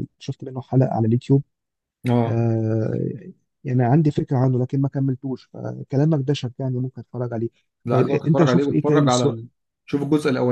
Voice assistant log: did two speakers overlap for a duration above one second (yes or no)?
yes